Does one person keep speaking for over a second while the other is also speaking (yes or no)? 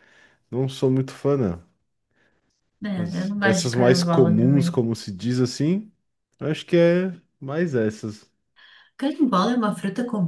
yes